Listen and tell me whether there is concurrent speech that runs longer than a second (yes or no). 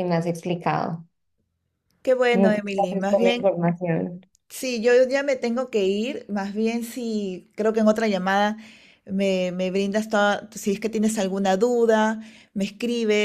yes